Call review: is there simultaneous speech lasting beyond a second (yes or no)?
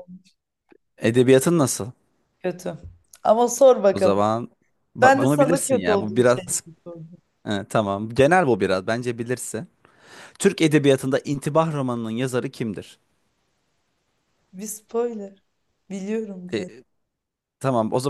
yes